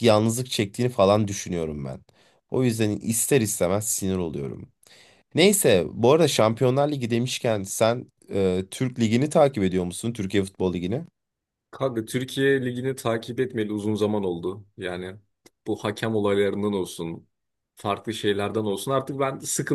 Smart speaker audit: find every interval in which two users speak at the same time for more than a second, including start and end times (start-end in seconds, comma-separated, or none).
none